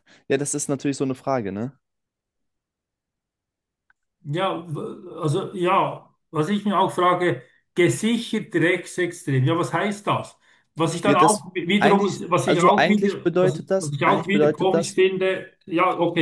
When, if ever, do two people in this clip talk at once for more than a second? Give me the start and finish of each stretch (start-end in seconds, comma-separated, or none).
11.0-15.0